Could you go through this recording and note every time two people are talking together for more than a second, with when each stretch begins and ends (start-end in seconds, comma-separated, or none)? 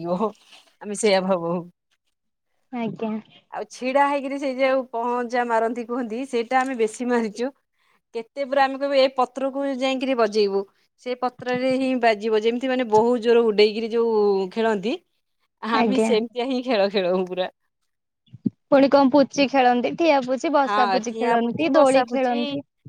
20.7-22.4